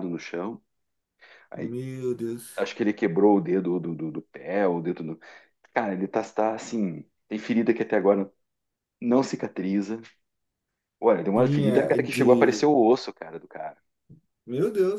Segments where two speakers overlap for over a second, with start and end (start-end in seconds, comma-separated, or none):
11.3-12.7